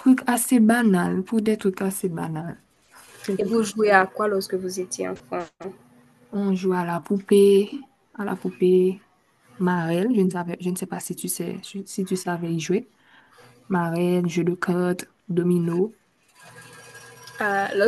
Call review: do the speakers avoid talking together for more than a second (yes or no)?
yes